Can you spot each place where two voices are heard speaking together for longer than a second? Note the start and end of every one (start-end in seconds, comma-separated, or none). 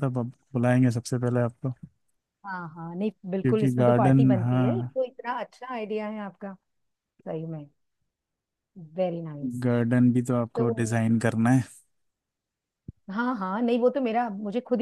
3.4-4.9